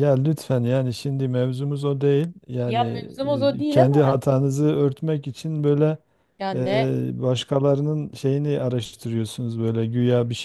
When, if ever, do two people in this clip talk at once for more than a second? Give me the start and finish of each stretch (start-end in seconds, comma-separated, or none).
none